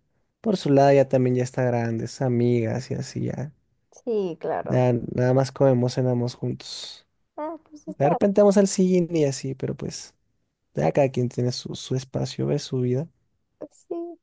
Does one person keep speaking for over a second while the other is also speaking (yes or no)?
no